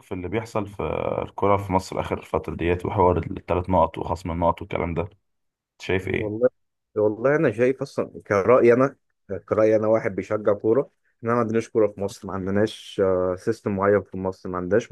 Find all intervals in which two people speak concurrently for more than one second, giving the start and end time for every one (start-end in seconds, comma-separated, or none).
none